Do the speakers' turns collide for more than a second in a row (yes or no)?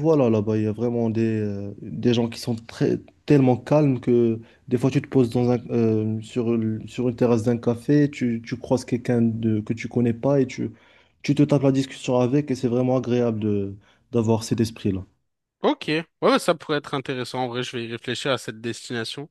no